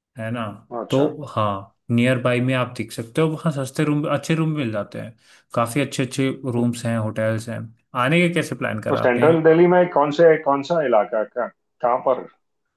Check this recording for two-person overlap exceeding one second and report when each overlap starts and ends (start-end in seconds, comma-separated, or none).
none